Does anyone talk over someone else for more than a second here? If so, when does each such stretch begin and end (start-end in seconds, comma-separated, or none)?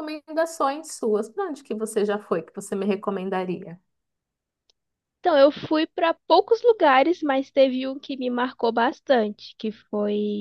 none